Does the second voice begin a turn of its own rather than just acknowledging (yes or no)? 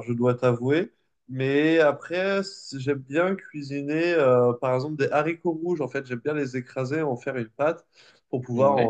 no